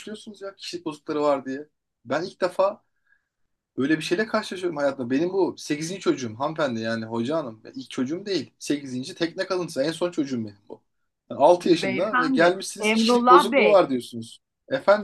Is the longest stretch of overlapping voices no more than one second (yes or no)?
no